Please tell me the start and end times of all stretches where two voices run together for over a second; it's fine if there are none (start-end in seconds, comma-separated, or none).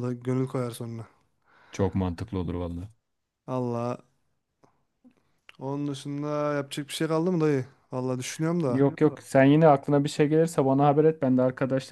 none